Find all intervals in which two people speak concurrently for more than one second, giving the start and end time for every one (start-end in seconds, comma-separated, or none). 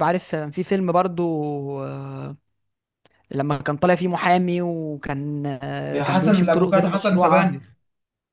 5.9-7.6